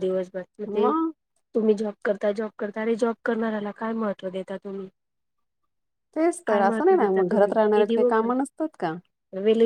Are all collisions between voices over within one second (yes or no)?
no